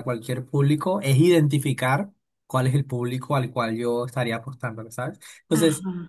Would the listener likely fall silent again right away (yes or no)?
yes